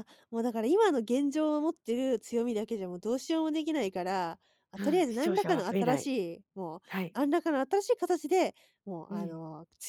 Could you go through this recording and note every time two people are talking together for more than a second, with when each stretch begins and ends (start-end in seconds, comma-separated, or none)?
4.8-6.1